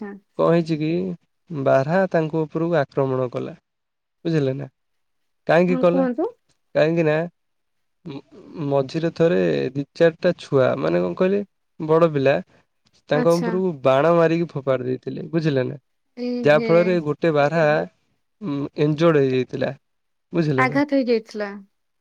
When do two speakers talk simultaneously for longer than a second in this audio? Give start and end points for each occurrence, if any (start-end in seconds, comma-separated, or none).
none